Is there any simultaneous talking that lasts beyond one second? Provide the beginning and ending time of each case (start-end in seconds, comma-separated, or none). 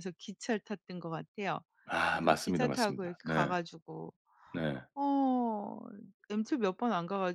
2.1-3.5